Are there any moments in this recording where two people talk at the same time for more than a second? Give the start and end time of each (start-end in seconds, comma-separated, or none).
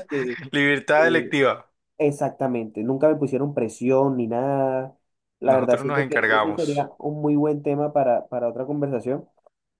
5.5-6.9